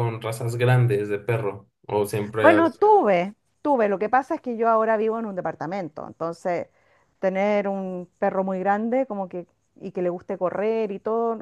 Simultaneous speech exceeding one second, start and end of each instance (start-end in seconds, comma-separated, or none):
none